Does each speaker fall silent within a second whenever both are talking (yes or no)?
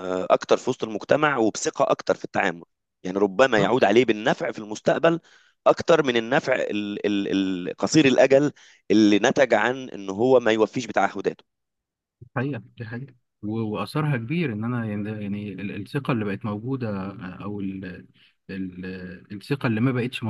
yes